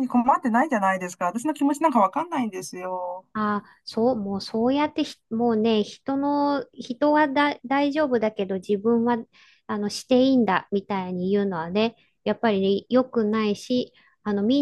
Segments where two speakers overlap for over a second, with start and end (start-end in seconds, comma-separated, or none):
none